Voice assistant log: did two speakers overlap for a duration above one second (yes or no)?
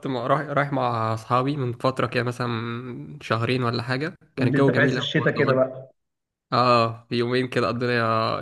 yes